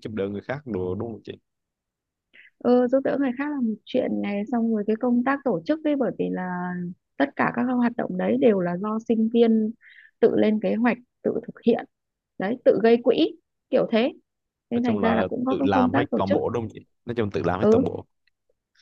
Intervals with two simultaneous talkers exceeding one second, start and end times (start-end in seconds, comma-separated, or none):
14.7-16.4